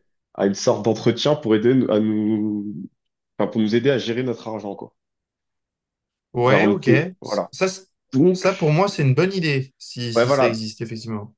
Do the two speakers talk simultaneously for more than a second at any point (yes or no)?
no